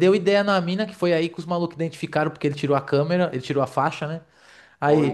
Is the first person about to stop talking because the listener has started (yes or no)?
no